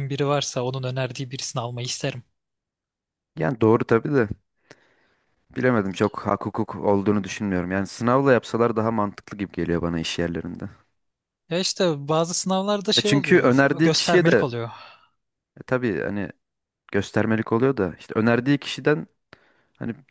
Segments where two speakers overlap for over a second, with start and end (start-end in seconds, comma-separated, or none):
12.9-14.4